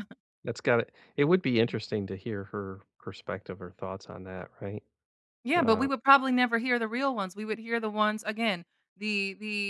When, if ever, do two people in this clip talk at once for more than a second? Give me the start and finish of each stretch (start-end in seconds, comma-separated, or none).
none